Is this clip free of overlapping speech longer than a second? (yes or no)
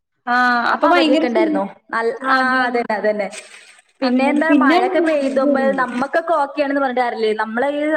no